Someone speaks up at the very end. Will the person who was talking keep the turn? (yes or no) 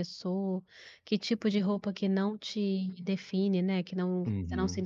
yes